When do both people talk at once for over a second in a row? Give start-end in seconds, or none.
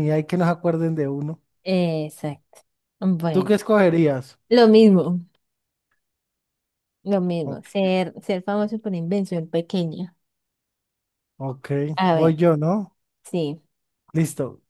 none